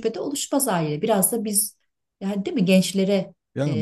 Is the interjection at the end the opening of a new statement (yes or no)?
yes